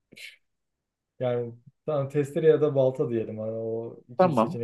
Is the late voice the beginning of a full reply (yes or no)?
no